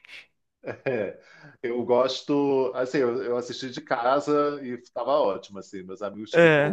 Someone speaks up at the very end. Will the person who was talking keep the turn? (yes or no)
yes